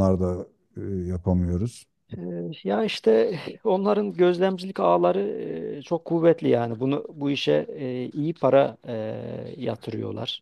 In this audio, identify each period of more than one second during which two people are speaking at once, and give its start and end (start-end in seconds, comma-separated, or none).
none